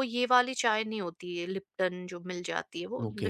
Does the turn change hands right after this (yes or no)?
no